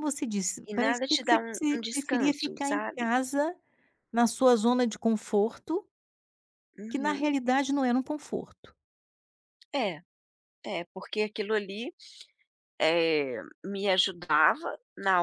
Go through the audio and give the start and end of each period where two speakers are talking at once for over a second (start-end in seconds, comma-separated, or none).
0.7-3.0